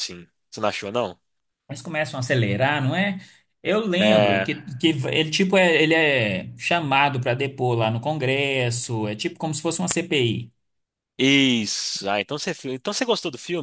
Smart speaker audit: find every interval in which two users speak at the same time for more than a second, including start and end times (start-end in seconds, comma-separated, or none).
none